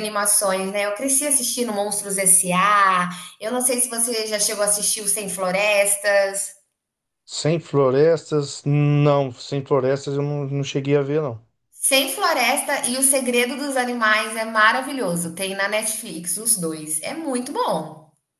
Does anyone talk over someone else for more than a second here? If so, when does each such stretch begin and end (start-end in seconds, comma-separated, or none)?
none